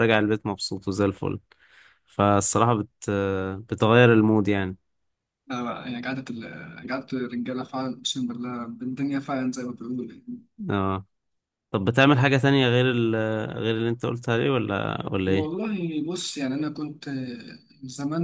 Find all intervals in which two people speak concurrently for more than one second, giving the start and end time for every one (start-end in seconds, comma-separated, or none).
none